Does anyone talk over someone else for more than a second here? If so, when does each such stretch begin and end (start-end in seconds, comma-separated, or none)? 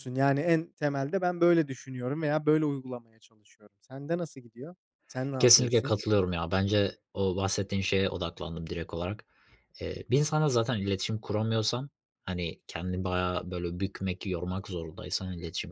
none